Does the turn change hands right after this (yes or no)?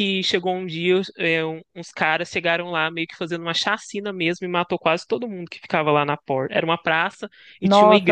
yes